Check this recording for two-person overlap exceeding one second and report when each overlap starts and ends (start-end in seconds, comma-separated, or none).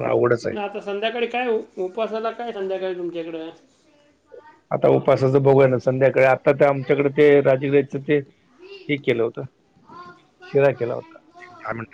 none